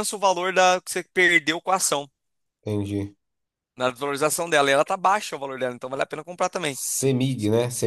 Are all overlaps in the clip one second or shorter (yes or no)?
yes